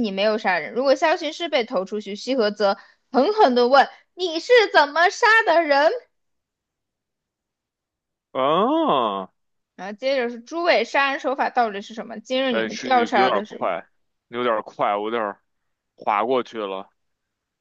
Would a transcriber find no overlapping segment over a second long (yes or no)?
no